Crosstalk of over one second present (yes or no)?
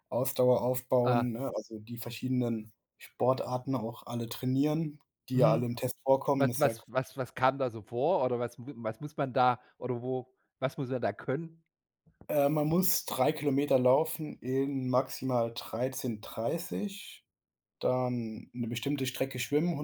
no